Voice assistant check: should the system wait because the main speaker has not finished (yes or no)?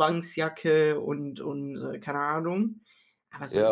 no